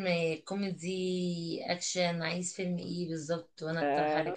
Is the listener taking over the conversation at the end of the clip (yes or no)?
yes